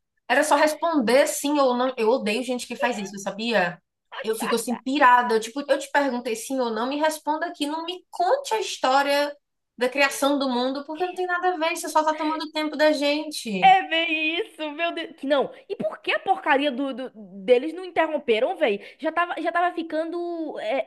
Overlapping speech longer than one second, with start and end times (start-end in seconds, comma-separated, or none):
none